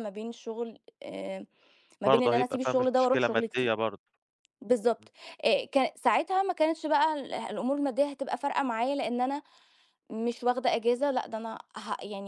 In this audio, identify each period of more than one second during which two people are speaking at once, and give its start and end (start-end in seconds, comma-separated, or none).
2.1-3.7